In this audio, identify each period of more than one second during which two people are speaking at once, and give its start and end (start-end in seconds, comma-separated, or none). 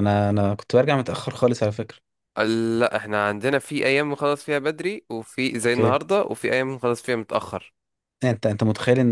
none